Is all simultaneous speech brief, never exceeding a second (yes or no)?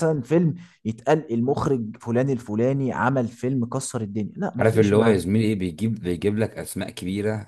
yes